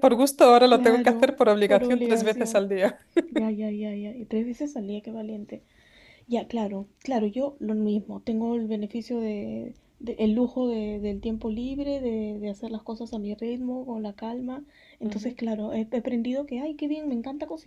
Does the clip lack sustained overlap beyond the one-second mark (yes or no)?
no